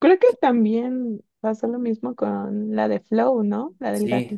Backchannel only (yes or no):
no